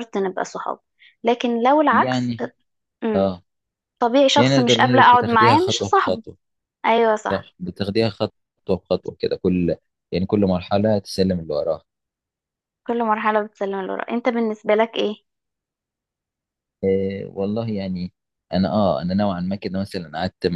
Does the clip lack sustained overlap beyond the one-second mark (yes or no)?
no